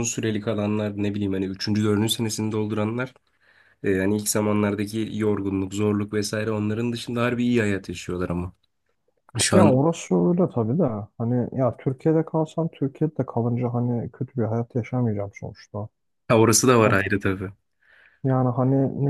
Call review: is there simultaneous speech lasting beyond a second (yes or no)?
no